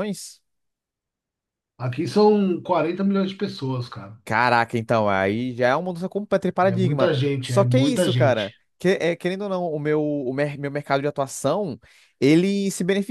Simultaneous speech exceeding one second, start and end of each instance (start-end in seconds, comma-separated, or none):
6.6-8.5